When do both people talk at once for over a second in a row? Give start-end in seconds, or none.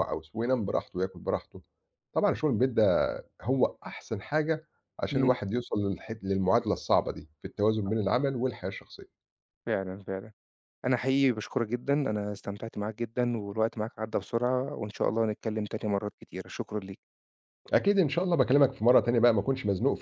none